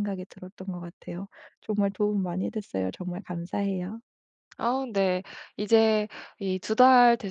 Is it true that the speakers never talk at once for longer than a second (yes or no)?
yes